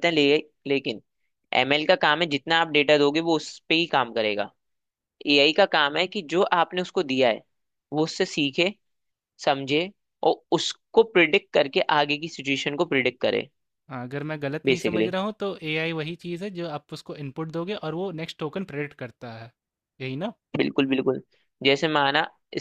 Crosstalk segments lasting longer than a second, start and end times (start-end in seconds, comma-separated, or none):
none